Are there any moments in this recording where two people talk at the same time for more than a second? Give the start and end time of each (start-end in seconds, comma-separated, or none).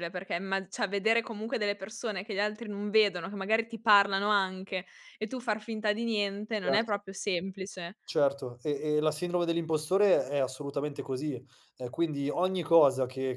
none